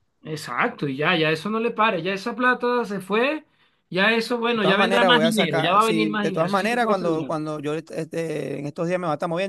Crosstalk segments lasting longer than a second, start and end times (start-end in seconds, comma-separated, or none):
4.5-7.3